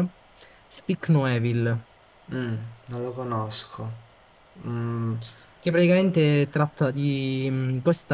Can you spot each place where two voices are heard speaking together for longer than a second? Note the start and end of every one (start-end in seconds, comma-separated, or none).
none